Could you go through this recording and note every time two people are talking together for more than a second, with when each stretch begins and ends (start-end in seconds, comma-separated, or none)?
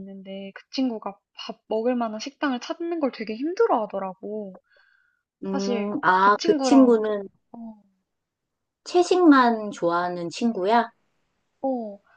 5.5-7.0